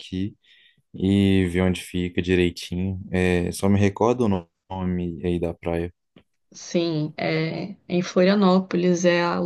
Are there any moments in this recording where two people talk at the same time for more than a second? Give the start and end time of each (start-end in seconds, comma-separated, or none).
none